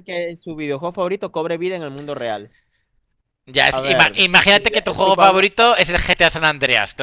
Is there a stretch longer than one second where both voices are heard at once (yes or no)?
yes